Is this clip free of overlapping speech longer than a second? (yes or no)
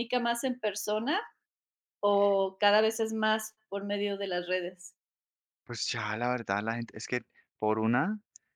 yes